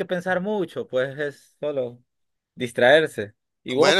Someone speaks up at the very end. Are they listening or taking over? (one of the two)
taking over